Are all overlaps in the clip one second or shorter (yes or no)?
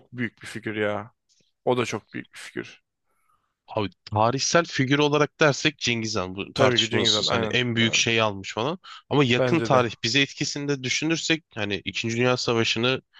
no